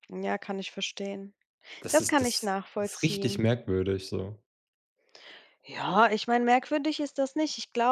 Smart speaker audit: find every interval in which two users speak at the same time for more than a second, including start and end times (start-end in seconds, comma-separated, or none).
1.9-3.4